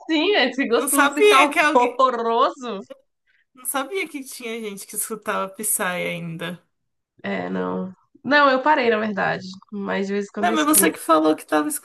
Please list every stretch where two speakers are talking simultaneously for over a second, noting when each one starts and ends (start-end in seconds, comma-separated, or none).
0.7-2.0